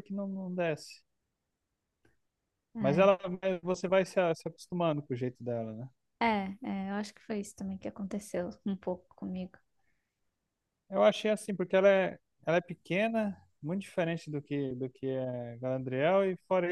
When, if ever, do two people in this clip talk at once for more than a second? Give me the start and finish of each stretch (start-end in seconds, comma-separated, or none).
none